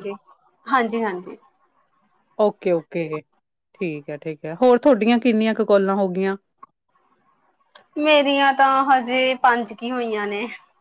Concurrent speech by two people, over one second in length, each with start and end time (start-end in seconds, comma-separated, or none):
none